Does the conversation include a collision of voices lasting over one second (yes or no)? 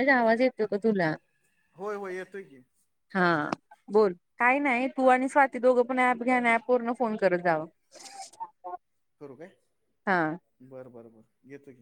no